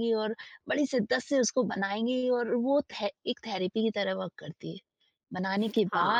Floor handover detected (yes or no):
no